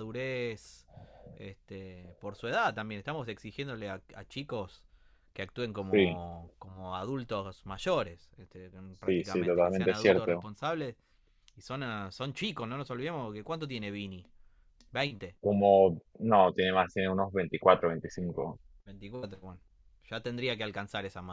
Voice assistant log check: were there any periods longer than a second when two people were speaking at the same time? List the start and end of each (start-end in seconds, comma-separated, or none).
9.0-10.5